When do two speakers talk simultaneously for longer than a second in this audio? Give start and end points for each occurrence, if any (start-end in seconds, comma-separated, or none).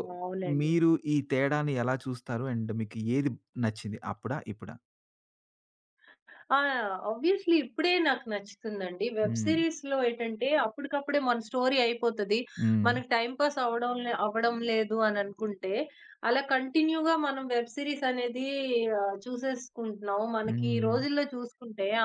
none